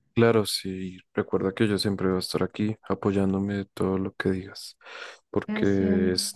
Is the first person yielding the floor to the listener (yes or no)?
no